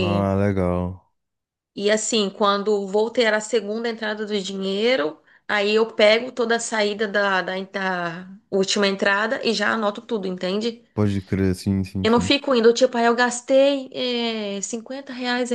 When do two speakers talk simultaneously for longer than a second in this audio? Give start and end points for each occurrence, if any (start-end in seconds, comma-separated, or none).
none